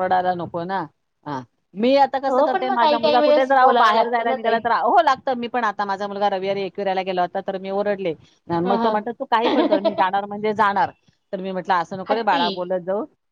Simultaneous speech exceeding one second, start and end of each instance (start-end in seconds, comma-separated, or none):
3.2-4.6